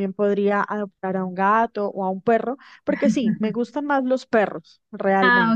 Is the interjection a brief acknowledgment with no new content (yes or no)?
no